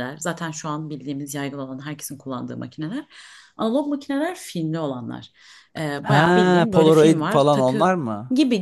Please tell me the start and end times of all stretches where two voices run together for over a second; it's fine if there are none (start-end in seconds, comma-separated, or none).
6.0-8.0